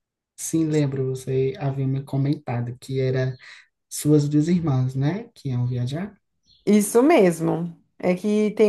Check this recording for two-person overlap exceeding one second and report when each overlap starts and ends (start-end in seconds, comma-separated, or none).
none